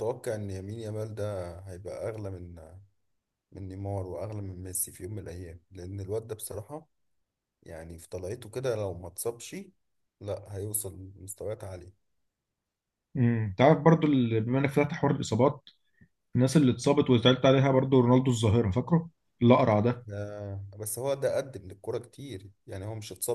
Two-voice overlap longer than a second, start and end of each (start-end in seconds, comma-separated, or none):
none